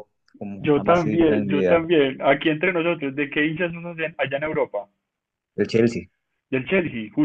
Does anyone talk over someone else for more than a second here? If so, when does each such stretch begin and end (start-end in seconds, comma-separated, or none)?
0.6-1.9